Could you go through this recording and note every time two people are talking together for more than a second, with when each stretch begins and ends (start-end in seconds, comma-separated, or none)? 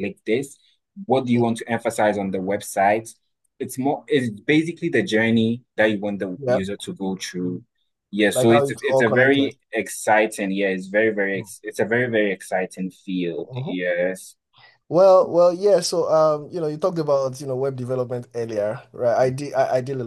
8.3-9.5